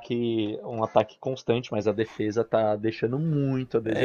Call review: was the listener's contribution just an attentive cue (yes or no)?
no